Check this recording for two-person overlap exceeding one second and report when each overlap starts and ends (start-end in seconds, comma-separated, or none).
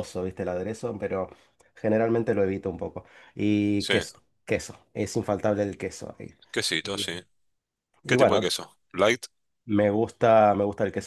none